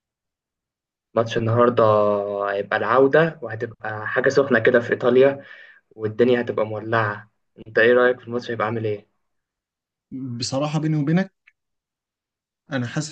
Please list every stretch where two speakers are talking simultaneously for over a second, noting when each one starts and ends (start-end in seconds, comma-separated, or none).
none